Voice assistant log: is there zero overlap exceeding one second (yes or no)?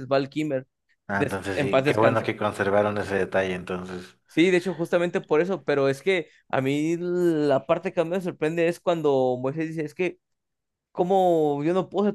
no